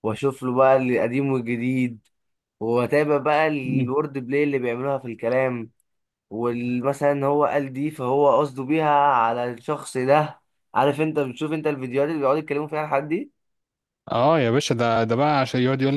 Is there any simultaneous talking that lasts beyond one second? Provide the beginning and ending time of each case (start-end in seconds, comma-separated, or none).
none